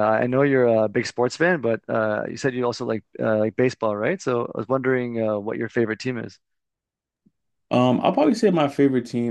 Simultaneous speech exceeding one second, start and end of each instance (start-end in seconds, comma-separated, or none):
none